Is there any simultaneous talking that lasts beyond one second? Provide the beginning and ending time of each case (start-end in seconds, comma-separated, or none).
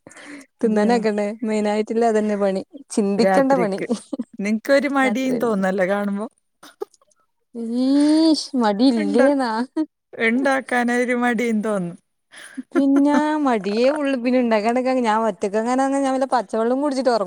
none